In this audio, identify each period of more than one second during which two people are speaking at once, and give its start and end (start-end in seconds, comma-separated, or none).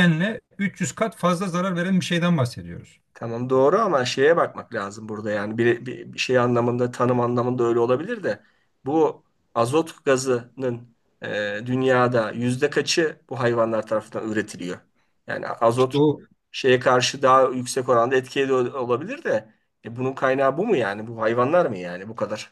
none